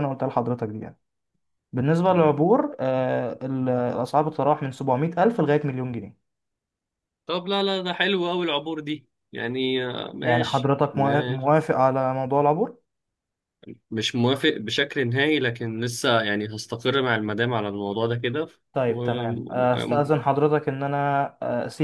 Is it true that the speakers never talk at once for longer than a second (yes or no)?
no